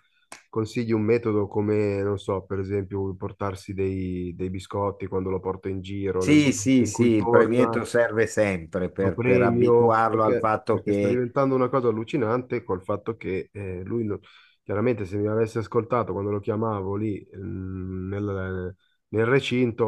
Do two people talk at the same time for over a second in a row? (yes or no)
yes